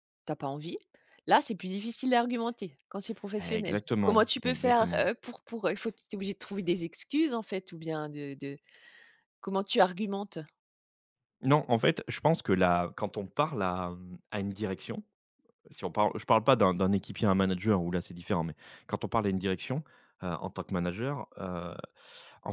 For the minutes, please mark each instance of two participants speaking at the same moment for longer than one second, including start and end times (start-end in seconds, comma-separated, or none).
3.4-5.0